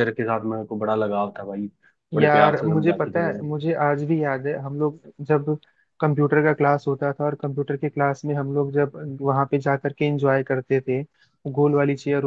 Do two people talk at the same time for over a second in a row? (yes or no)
yes